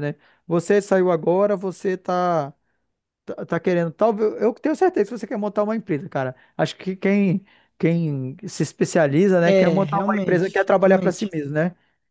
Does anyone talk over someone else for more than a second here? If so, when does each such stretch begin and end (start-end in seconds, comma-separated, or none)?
9.4-11.3